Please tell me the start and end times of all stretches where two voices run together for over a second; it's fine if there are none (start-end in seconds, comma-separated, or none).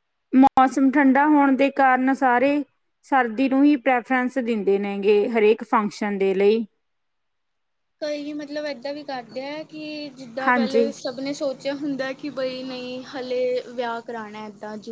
none